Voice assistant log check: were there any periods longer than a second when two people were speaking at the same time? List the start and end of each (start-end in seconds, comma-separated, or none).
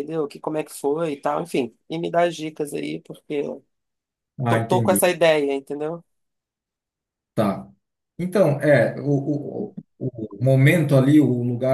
none